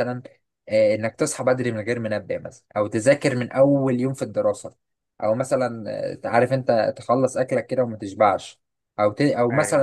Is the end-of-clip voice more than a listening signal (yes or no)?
no